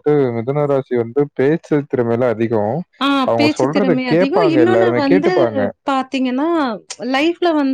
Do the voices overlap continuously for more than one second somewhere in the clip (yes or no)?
yes